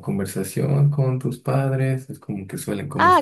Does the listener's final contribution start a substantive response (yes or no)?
yes